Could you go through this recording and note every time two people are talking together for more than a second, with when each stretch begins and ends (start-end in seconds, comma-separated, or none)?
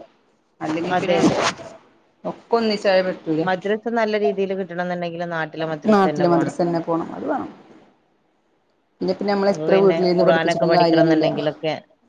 9.5-11.3